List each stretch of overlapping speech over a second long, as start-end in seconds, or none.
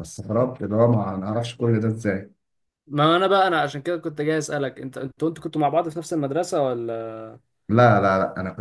none